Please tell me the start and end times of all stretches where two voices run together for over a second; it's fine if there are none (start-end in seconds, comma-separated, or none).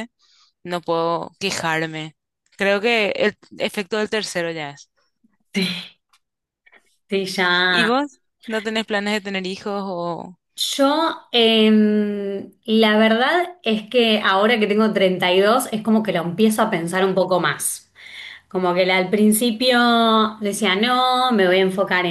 none